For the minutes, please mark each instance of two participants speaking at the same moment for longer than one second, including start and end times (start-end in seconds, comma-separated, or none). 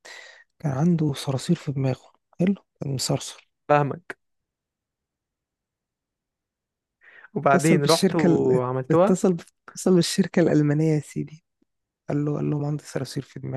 7.5-9.2